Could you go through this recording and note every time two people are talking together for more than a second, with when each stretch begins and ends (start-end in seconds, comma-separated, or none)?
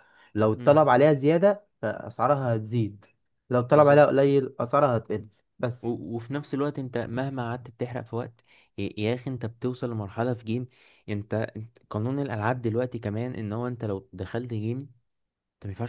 none